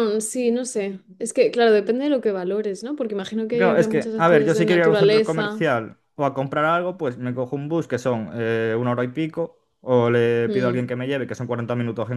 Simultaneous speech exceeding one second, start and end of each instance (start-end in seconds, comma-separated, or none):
3.5-5.7